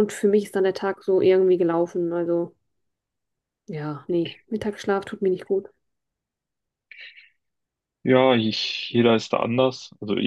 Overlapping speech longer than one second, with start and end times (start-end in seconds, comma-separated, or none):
none